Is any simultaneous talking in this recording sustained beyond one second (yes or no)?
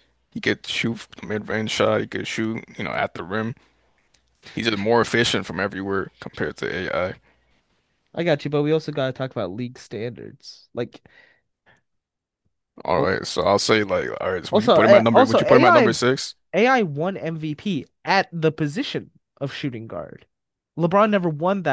yes